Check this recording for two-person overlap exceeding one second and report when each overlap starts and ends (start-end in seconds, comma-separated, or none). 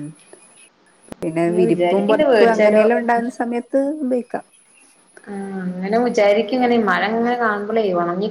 1.4-2.8